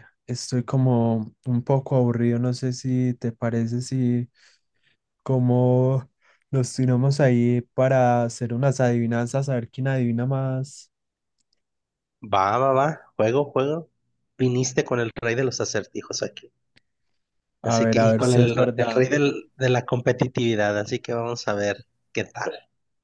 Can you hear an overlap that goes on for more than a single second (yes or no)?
yes